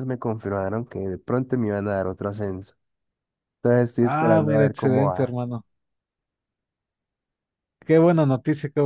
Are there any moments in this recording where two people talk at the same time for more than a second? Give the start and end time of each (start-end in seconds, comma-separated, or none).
4.0-5.3